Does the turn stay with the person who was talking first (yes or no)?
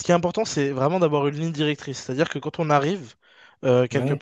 yes